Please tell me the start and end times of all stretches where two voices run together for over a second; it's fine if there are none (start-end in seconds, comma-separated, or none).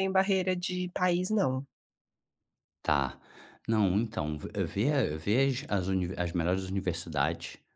none